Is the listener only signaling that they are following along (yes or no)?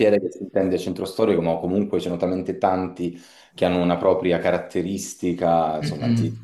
no